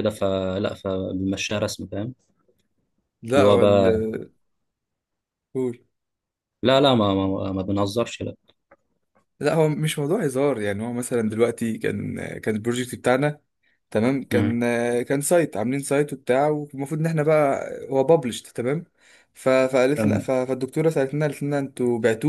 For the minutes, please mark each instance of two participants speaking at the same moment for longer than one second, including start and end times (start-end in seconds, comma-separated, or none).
none